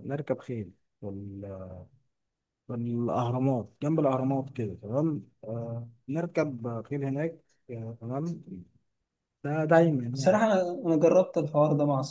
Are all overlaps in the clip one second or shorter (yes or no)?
yes